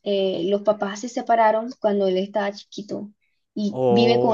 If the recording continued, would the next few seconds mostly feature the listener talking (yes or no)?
no